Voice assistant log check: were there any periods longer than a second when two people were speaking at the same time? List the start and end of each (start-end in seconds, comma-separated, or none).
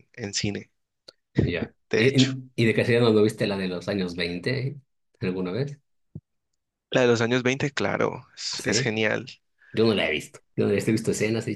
none